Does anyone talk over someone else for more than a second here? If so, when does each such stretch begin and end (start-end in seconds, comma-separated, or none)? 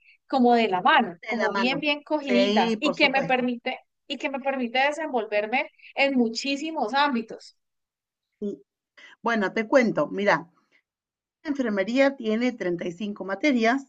1.2-3.5